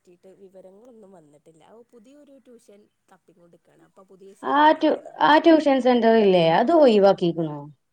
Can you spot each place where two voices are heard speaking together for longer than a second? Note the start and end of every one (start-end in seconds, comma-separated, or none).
none